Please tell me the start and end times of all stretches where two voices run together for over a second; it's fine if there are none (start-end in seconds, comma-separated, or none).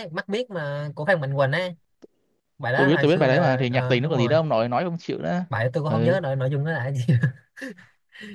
2.8-4.3